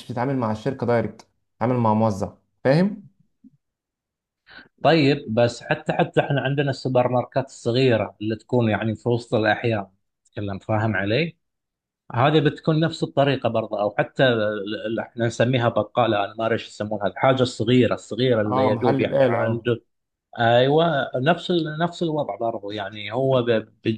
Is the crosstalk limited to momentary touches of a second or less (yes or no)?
no